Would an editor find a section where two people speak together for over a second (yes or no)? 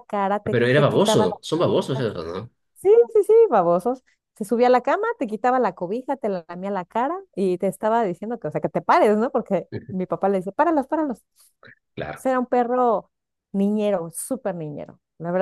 yes